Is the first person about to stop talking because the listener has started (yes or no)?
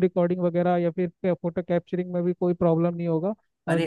yes